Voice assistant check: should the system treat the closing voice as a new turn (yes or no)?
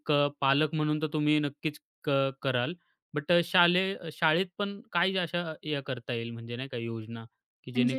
no